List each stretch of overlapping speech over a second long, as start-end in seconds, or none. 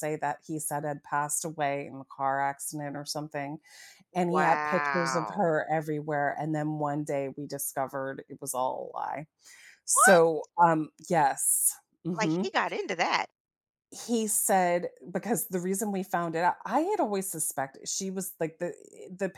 4.3-5.5